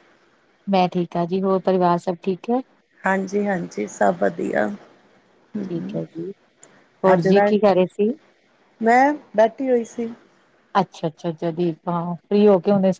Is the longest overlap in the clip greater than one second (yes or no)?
no